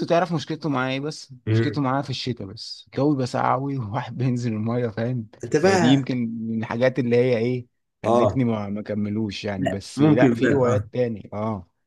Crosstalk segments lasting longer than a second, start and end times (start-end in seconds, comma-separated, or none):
9.6-10.9